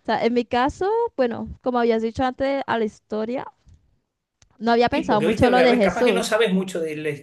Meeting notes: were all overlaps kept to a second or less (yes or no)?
no